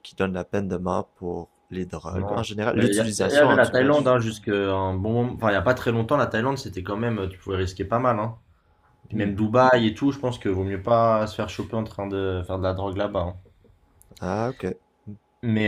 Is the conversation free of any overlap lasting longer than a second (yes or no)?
no